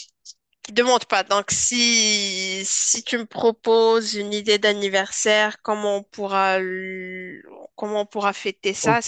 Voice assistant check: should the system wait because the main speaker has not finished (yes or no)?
no